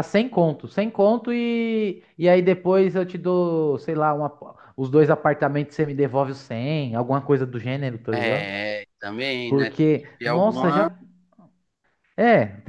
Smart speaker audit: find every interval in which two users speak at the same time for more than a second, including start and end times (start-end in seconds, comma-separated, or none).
9.5-10.8